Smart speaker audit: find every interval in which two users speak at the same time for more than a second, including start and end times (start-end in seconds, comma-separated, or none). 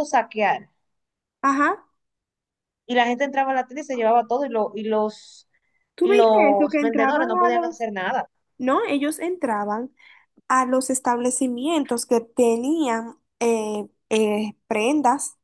6.0-7.8